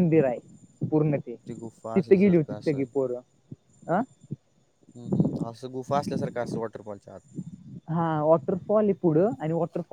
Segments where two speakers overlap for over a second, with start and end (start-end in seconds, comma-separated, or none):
1.5-2.9